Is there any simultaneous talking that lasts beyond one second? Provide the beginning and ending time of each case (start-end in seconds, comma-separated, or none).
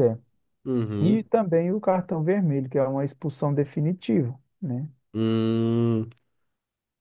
none